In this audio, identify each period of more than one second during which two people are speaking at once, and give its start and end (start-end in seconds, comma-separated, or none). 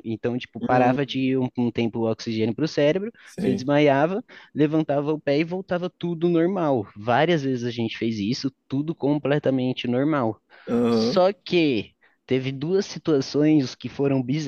none